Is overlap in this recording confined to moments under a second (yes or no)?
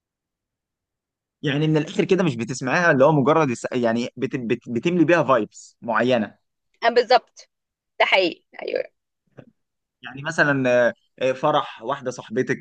yes